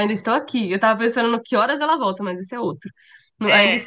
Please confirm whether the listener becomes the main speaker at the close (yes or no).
no